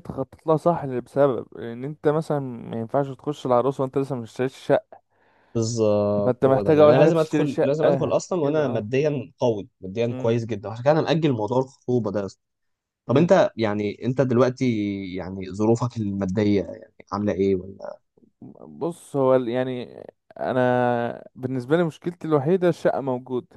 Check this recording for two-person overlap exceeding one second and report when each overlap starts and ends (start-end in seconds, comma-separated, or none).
6.2-8.9